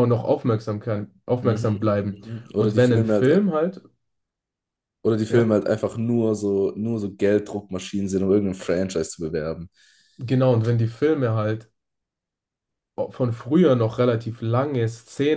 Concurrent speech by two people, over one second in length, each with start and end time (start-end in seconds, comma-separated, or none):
1.4-3.3